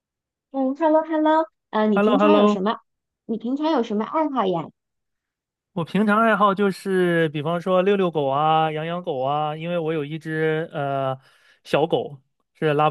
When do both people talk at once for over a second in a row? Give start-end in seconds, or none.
none